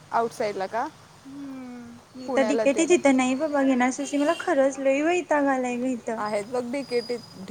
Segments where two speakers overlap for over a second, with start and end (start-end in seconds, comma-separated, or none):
none